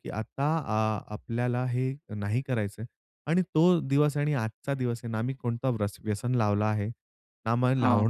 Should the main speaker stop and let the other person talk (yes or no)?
no